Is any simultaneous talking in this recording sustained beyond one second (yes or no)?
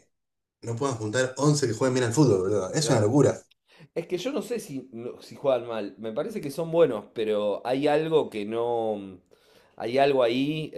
no